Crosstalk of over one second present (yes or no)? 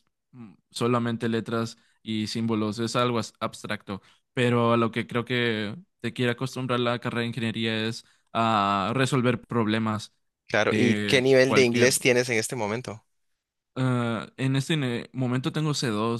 yes